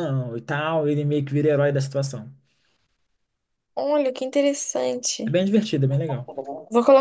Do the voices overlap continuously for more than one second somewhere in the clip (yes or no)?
no